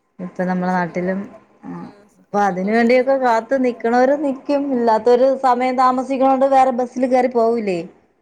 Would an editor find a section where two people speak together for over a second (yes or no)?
yes